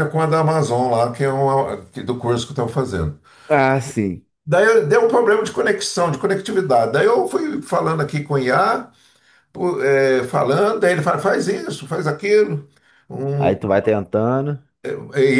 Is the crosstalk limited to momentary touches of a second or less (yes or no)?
yes